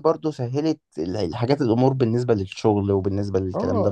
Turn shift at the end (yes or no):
yes